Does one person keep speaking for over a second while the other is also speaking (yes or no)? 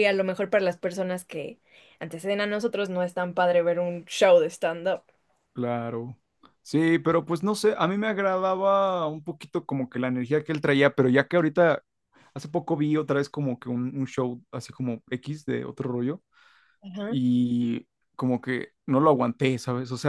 no